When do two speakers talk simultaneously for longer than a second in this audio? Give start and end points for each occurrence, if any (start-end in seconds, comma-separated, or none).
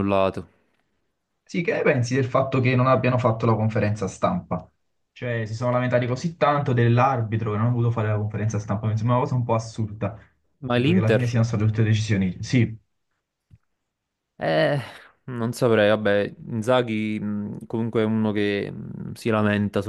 none